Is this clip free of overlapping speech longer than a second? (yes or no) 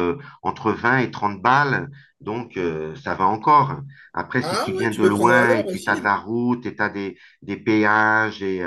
no